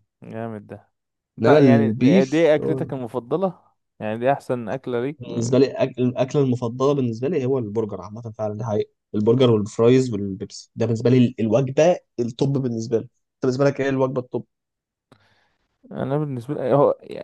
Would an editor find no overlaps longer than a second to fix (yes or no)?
no